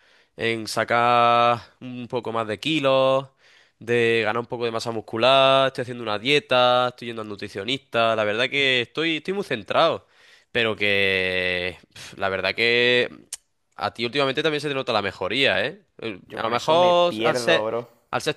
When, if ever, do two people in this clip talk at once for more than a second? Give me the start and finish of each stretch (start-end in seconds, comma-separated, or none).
16.2-17.6